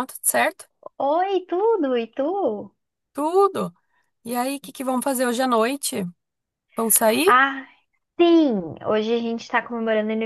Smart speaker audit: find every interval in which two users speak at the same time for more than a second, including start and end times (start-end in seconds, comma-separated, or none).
none